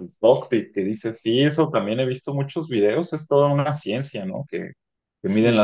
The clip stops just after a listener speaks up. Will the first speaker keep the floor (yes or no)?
yes